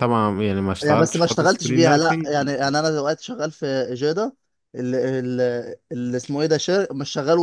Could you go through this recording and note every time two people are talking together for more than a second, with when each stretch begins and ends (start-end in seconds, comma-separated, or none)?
0.8-2.3